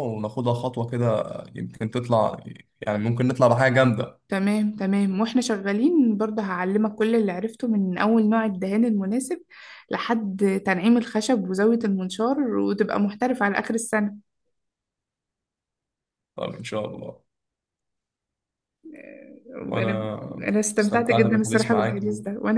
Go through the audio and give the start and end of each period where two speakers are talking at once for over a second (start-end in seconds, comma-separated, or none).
20.8-22.0